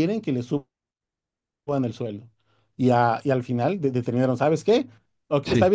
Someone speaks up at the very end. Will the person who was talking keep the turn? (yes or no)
yes